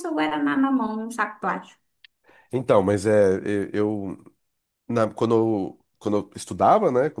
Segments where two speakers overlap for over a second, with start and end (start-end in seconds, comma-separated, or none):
none